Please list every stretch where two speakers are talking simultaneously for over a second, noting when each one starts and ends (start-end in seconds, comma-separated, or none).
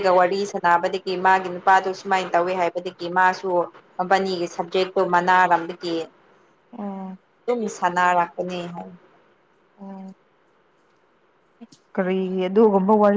none